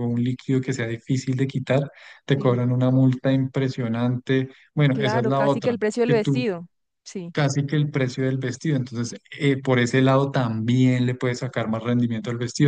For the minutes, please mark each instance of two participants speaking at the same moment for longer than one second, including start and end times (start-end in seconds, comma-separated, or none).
4.9-6.5